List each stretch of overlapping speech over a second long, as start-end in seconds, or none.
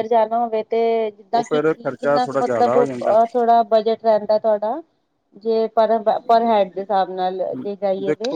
1.3-3.1